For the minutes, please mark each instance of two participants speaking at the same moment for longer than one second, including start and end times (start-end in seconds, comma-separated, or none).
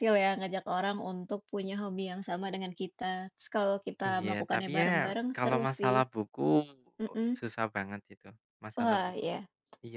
4.0-6.0